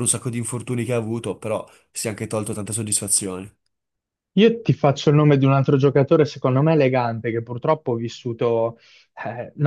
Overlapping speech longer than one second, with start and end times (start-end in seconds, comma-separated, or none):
none